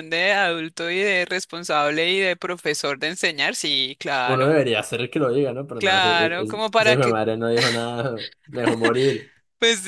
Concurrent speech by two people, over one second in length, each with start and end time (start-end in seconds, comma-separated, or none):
5.8-7.2